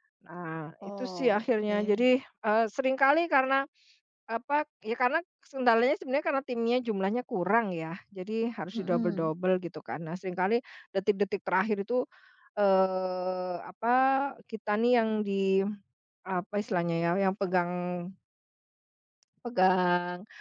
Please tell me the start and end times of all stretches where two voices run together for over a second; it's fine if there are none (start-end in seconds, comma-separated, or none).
0.8-2.0